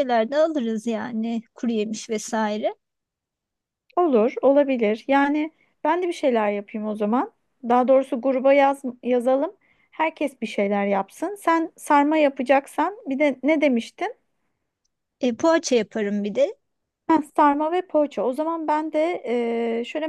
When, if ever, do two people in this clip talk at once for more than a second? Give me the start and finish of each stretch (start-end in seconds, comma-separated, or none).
none